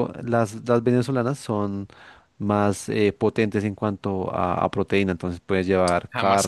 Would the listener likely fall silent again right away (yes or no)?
yes